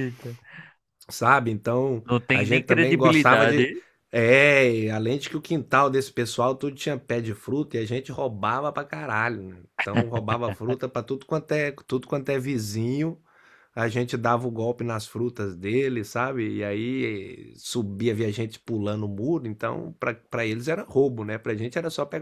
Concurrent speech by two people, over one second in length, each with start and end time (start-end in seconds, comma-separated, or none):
2.0-3.7